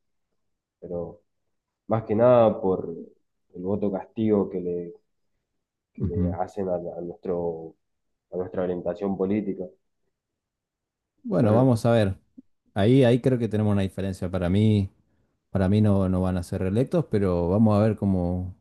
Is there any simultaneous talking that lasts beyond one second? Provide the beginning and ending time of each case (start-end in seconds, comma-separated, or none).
none